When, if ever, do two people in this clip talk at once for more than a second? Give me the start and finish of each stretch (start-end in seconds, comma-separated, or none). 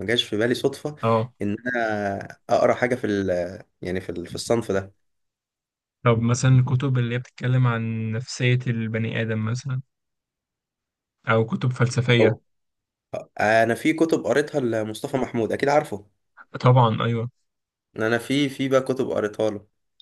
none